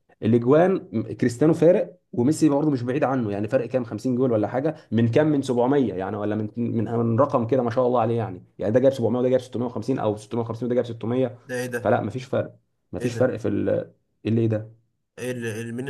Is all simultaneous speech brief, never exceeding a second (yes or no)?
yes